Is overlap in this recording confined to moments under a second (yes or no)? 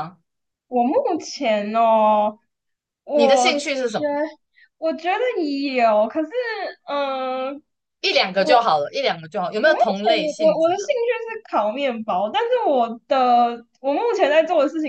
no